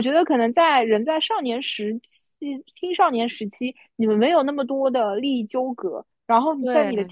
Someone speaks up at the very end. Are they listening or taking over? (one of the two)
listening